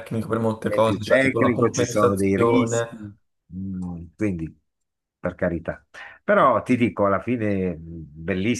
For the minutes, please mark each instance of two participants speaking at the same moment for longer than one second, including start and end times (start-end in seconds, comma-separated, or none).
0.6-2.9